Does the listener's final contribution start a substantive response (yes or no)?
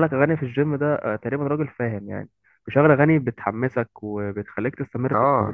yes